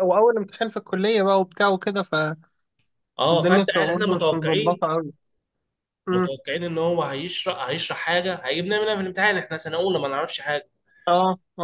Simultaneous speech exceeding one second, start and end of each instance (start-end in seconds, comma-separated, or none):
3.3-4.8